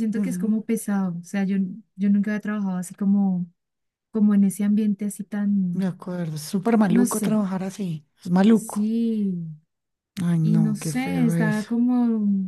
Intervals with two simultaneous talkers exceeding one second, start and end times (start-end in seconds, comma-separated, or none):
10.4-11.7